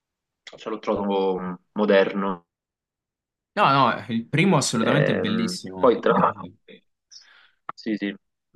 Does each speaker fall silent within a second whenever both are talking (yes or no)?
no